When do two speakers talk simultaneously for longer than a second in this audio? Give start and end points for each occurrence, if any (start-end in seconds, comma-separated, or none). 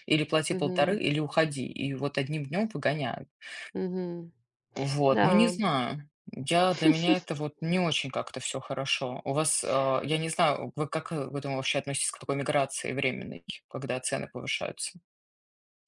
none